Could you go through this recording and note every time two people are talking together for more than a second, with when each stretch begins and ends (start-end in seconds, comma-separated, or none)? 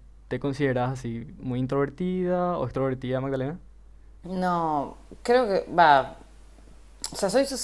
none